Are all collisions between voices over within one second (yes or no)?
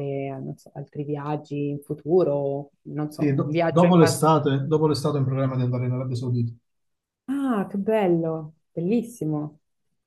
no